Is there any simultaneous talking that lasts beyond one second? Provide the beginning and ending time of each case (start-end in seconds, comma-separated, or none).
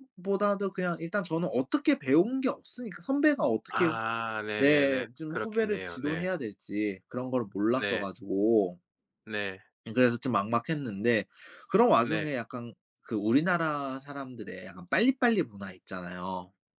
4.6-6.3